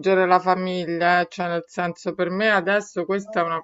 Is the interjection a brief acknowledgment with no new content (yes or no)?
yes